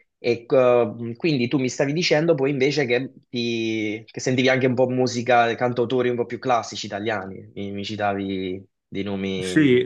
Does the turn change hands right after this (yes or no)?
yes